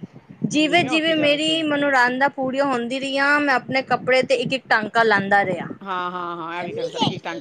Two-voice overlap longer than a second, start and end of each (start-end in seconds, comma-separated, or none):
0.5-1.8